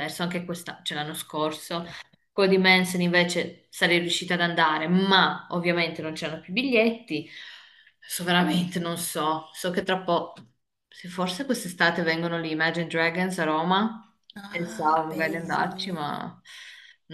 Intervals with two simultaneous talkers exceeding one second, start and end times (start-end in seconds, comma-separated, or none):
14.4-16.1